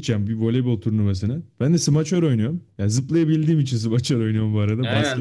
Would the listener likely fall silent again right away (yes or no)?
no